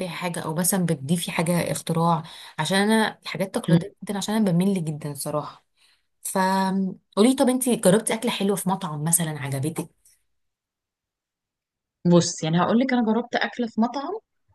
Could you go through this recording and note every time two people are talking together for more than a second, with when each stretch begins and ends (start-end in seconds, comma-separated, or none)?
none